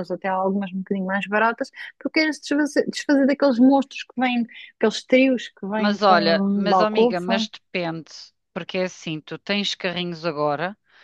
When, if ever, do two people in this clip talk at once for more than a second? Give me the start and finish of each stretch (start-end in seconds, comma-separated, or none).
5.8-7.5